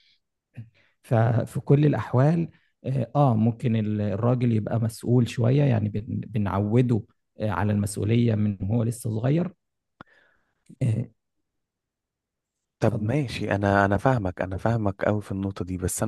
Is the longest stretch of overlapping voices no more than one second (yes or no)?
yes